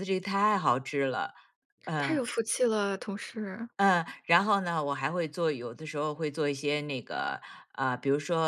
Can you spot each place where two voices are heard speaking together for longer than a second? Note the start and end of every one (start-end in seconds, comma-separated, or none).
none